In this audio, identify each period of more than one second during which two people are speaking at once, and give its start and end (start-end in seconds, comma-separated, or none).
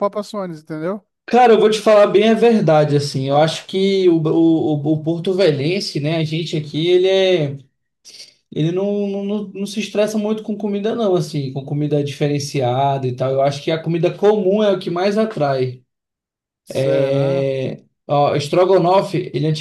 none